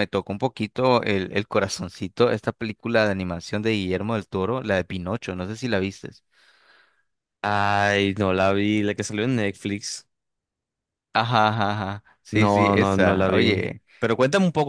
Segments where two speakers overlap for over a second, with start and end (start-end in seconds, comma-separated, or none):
12.3-13.6